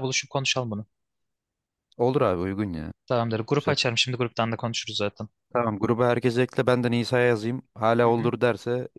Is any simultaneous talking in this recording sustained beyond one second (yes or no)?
no